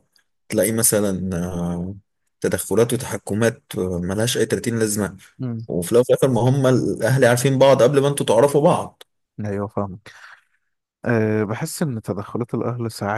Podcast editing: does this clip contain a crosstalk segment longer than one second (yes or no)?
no